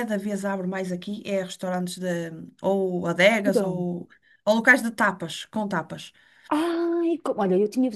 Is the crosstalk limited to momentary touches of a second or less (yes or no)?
yes